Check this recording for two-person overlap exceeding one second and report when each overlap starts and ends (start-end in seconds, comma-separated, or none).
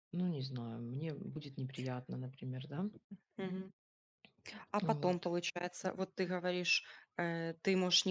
none